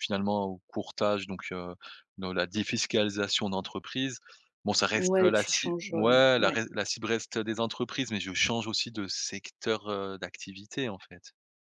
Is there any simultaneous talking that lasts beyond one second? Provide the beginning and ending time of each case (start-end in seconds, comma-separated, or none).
5.0-6.6